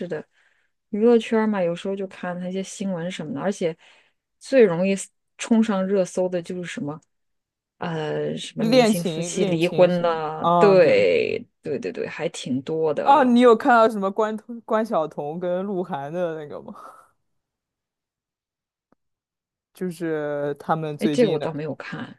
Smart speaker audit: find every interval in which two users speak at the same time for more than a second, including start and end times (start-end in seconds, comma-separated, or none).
8.6-11.1